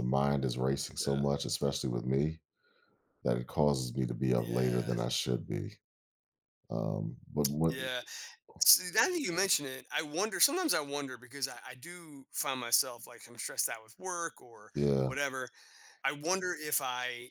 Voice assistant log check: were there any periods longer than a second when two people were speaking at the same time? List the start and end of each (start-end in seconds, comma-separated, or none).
none